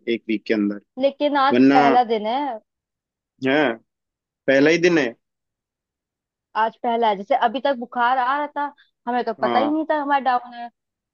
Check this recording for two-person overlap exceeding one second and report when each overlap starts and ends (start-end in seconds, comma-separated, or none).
none